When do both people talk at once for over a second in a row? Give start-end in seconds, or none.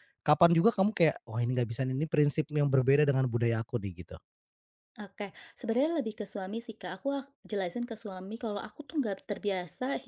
none